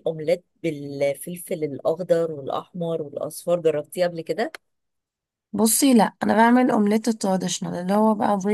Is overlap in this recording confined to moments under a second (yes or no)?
yes